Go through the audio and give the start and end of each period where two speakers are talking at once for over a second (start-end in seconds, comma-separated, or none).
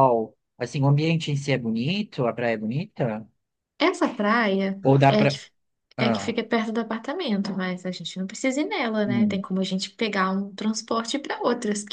none